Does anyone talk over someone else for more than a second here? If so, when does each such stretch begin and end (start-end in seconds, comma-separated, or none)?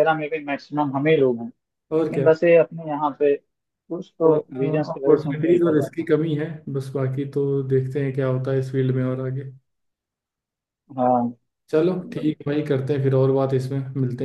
4.2-6.1